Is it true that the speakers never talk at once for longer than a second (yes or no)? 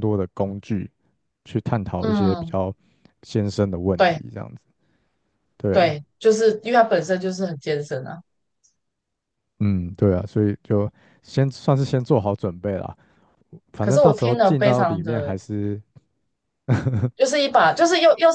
no